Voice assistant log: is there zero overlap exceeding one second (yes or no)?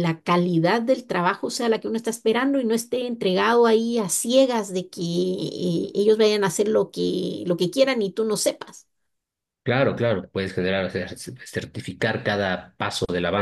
yes